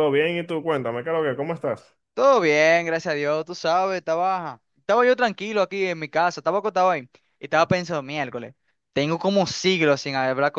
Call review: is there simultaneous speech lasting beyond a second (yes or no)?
no